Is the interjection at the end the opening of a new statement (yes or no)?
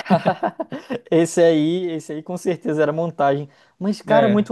no